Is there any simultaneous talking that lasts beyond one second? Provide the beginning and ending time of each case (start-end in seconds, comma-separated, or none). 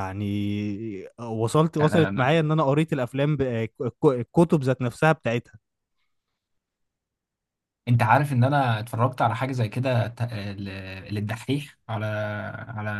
none